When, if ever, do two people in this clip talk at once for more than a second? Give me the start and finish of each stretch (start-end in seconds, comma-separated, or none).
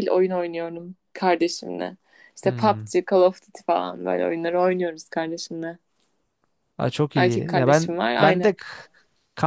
7.1-8.6